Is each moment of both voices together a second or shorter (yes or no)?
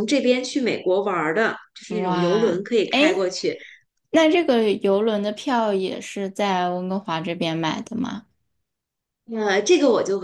no